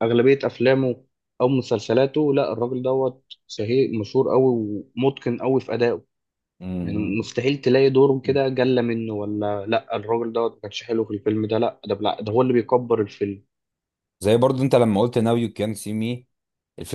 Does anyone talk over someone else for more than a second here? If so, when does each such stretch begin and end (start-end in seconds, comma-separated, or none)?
none